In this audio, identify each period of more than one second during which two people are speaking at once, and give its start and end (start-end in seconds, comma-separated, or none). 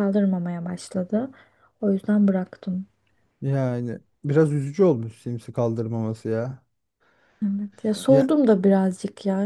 none